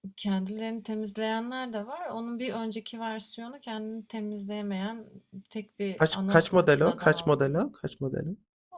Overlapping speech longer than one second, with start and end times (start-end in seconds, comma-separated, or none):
6.0-7.7